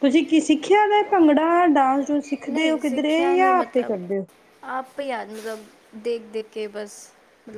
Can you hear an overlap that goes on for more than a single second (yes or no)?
yes